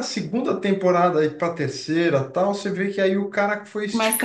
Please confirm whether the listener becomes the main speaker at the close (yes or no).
yes